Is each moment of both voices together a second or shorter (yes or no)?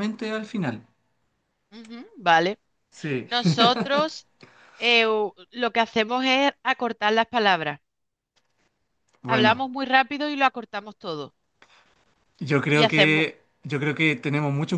yes